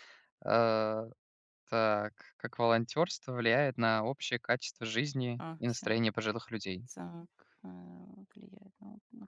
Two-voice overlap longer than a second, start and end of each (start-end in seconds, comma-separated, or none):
none